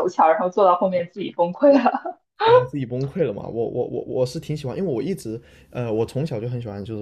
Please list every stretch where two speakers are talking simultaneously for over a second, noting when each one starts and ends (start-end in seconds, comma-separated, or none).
none